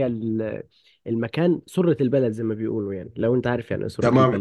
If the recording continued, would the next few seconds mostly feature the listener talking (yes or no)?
yes